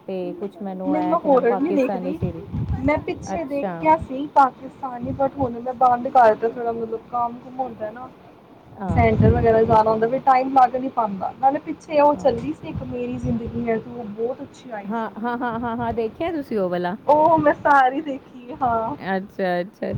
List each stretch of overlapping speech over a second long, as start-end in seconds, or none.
0.9-2.2, 8.9-10.4